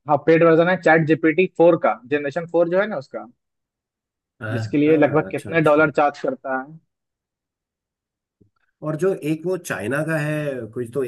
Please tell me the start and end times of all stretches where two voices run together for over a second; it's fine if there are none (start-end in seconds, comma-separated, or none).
4.5-5.8